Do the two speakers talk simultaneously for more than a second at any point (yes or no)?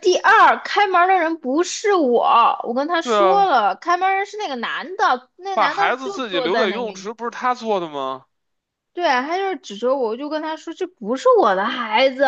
yes